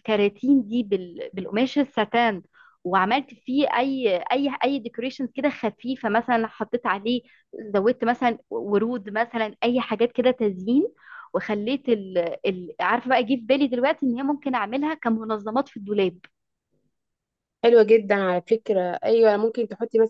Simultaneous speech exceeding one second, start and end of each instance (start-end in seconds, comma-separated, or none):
none